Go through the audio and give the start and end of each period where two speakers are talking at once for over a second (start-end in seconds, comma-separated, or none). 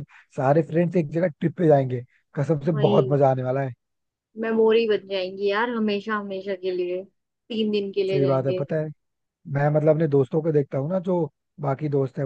none